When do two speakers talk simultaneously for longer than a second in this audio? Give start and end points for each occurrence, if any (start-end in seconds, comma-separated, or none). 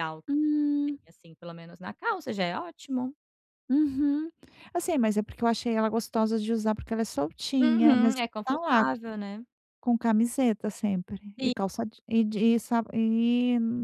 7.6-8.8